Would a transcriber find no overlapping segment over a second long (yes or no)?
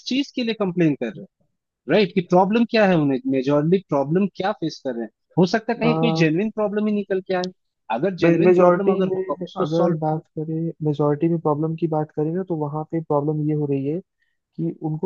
no